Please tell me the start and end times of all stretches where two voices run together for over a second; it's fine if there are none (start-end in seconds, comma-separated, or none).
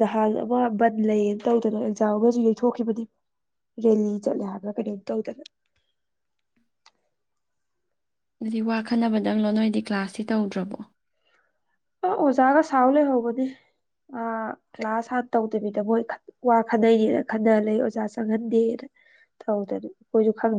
none